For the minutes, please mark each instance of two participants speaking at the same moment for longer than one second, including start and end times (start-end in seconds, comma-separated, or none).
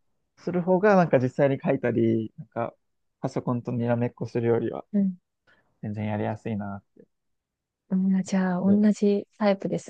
none